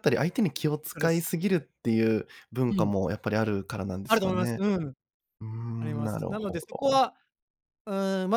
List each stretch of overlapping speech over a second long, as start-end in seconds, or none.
5.8-7.0